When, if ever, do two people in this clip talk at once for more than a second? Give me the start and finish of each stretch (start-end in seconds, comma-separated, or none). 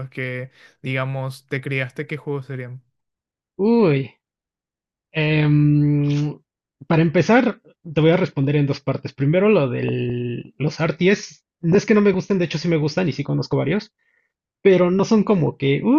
none